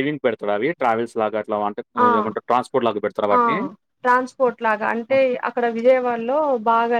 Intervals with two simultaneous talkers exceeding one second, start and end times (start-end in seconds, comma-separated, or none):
none